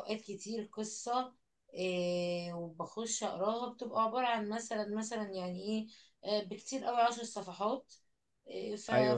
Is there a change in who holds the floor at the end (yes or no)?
no